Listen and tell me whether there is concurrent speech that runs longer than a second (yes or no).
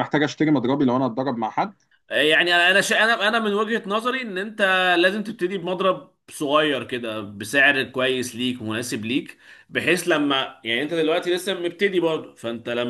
no